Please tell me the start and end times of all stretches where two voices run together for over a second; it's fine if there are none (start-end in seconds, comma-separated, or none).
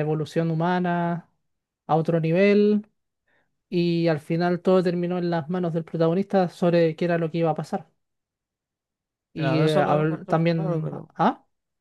9.3-11.1